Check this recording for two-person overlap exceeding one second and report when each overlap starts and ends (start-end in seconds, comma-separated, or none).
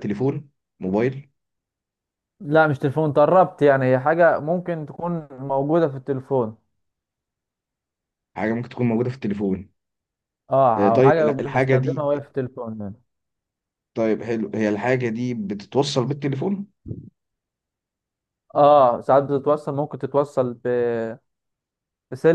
10.8-12.0